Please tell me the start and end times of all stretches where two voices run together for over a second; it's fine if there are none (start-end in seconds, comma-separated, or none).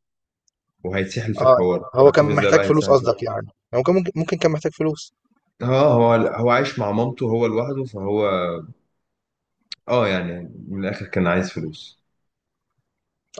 1.4-3.1